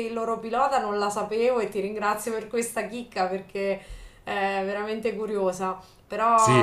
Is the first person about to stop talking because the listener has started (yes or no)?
no